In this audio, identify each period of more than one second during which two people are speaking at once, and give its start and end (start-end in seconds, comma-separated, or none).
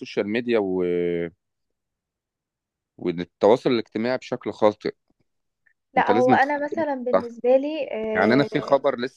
6.0-7.3